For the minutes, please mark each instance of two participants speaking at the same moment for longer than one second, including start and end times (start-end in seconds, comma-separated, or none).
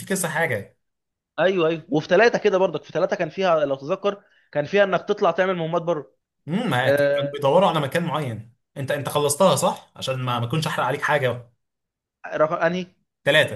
none